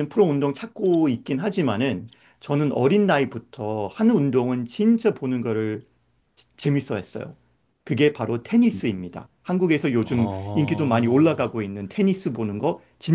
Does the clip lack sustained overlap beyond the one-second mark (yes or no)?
no